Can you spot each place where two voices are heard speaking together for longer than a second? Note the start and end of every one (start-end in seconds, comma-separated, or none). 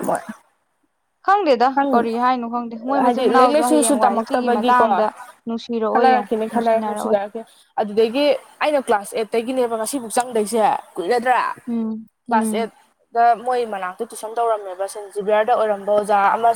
3.0-4.9